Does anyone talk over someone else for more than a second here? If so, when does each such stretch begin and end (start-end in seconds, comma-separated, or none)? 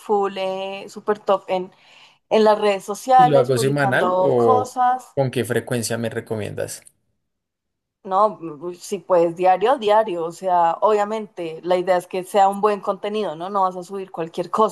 3.1-4.8